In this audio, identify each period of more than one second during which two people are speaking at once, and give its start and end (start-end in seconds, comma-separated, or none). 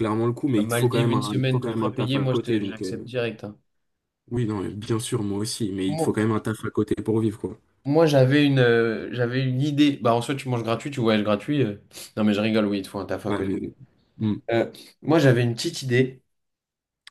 0.6-3.1